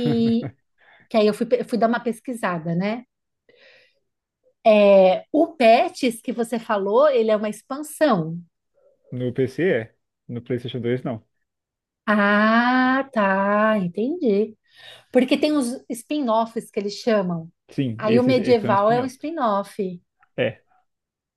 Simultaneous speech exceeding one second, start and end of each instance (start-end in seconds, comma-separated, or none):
18.0-19.3